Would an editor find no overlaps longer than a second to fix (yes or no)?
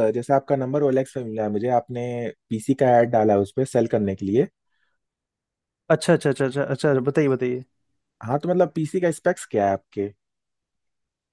yes